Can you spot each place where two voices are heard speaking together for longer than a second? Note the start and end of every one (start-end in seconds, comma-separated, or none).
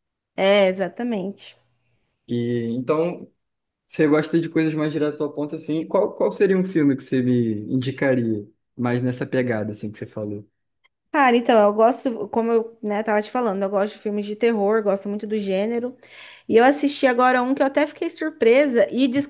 none